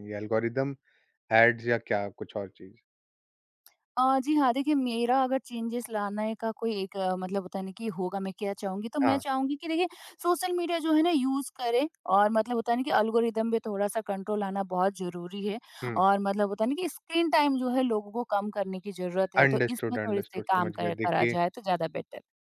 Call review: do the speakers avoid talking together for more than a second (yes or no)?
no